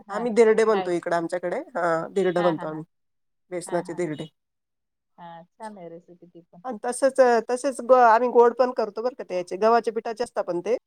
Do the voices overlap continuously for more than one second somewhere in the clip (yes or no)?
no